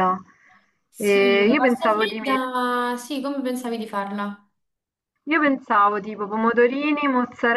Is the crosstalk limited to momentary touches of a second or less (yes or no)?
no